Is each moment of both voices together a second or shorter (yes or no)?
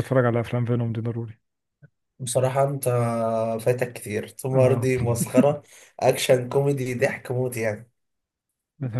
yes